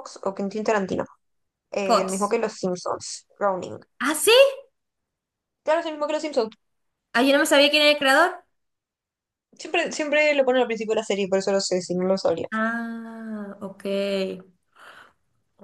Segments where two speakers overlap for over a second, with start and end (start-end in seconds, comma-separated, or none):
none